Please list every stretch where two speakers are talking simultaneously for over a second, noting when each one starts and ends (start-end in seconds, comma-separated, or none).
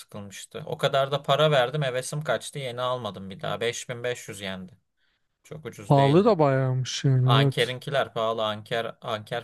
none